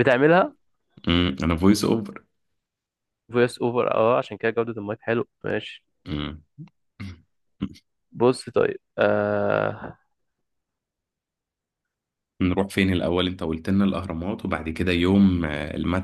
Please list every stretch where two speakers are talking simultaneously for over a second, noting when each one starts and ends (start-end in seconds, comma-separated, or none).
none